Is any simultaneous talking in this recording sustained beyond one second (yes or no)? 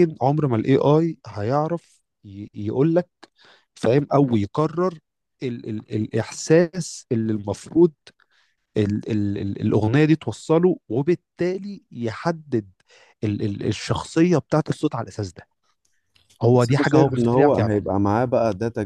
yes